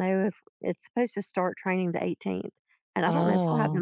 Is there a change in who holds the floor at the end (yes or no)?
no